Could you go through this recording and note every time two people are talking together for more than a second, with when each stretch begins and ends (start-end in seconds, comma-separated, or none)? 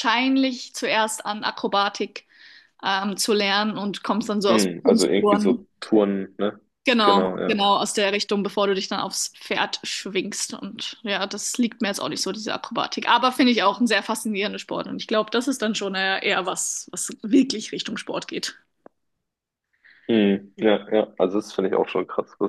4.5-5.7